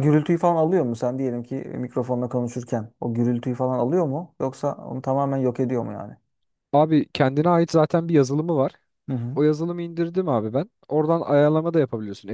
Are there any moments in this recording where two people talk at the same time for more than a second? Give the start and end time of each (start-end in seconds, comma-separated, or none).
none